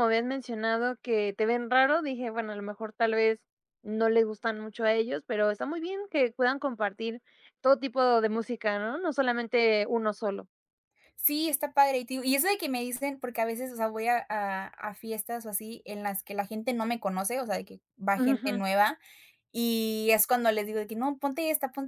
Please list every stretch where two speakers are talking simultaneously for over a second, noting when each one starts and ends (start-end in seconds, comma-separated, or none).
none